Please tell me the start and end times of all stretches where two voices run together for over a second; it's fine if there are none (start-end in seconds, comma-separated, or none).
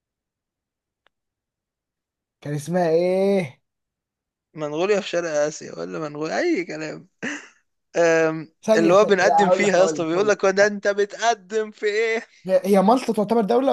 8.6-10.7